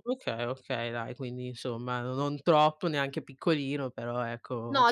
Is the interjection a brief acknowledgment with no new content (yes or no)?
no